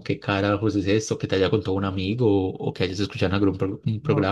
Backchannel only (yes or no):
no